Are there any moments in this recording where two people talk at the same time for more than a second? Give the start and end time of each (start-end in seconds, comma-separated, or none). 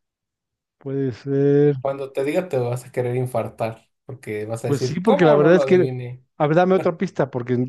4.7-5.9